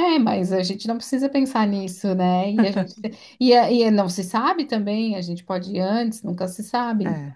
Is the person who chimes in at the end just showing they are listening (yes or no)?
yes